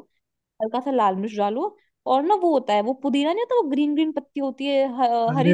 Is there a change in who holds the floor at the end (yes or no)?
yes